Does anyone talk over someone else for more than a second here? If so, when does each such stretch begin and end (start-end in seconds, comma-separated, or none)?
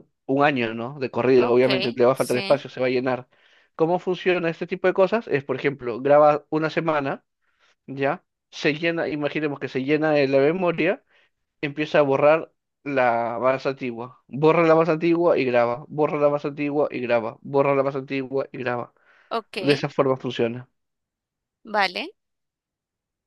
1.4-2.7